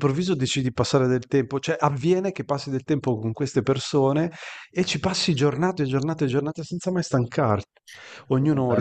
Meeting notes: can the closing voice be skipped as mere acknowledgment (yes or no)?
yes